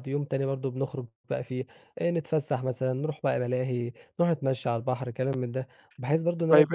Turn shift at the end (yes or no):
yes